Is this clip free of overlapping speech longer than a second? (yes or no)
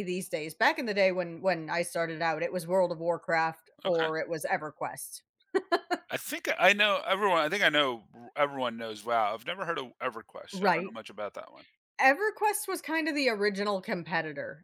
yes